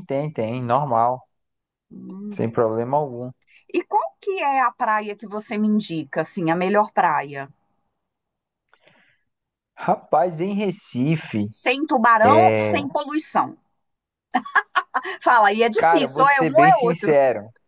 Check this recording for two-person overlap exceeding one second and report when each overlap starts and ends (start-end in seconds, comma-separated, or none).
15.8-17.2